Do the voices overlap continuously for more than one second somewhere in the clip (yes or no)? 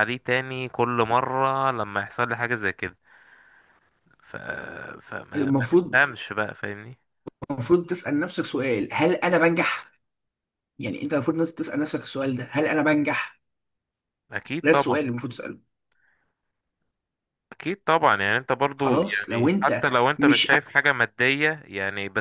yes